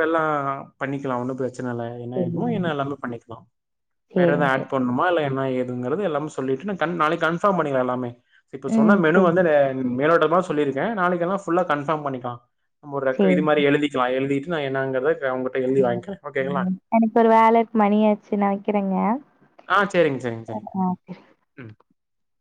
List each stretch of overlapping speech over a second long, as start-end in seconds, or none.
none